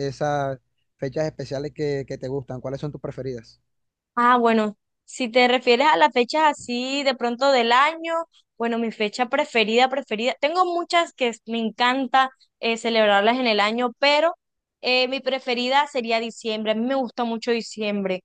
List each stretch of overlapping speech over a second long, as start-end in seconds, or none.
none